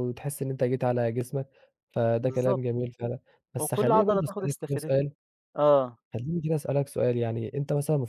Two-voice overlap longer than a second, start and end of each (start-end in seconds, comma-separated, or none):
3.6-5.1